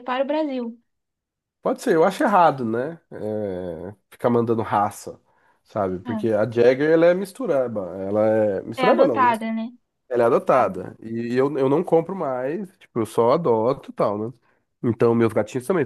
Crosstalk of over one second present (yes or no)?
no